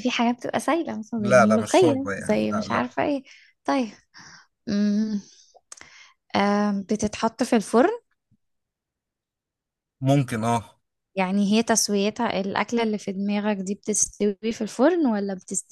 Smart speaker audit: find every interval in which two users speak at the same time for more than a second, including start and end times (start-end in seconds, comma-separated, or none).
1.2-2.9